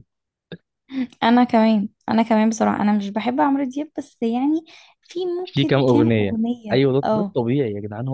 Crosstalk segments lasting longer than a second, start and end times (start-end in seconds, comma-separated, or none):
5.4-7.3